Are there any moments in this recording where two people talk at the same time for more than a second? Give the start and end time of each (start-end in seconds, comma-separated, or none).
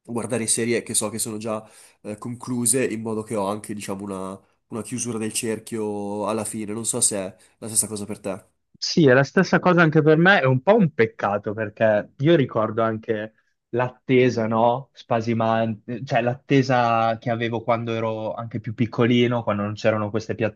none